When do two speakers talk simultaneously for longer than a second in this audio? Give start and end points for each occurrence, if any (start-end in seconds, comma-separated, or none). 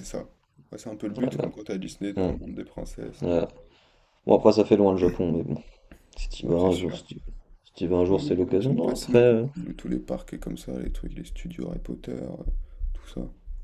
8.1-9.5